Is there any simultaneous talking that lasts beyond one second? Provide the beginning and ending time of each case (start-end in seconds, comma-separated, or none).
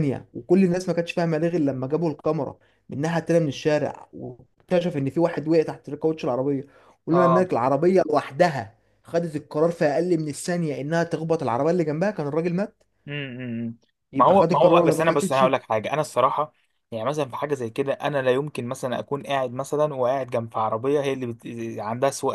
14.2-15.4